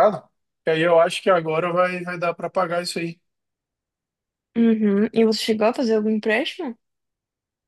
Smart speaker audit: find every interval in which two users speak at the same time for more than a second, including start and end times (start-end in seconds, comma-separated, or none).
none